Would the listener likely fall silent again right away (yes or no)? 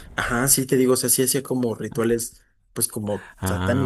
yes